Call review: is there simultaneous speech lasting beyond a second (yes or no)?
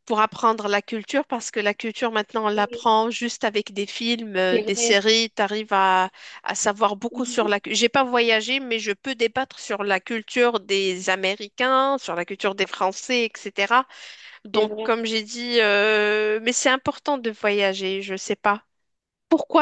no